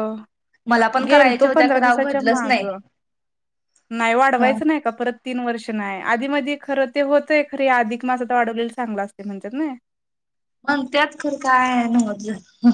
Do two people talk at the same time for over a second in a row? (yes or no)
yes